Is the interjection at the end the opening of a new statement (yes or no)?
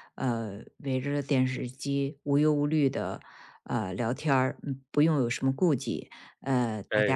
no